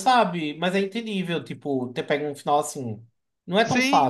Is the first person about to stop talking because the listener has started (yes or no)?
yes